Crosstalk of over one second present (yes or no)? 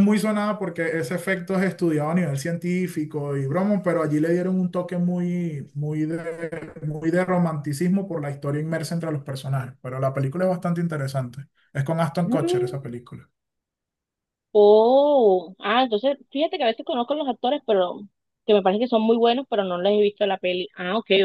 no